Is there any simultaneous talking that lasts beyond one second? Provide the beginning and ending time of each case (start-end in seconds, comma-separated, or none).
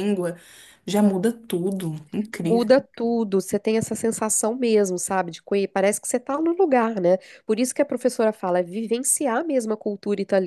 none